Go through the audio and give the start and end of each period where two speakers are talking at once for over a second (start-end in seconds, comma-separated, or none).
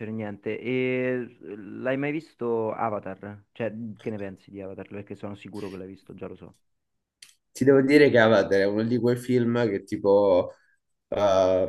none